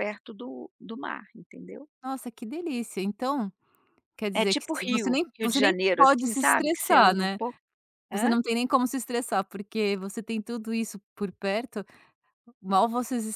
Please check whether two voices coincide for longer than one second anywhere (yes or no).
yes